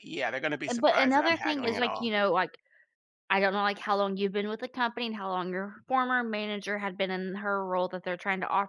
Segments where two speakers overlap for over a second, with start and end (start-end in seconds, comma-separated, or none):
0.7-2.1